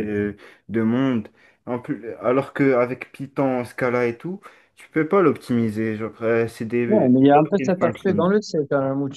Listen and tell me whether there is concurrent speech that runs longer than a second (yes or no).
yes